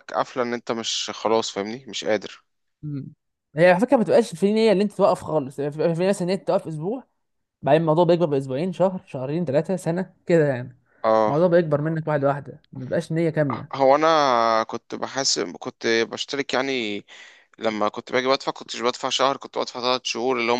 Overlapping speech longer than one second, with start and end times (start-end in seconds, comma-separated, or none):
none